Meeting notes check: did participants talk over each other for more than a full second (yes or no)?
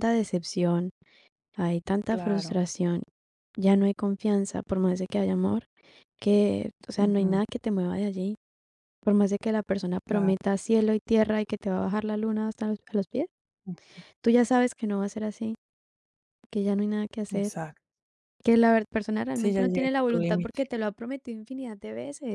yes